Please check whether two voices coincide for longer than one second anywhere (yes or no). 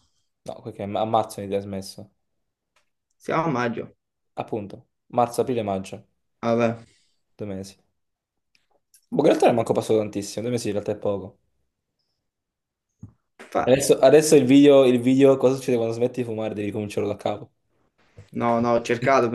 no